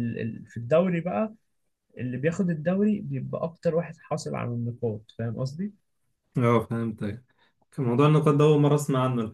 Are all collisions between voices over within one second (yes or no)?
yes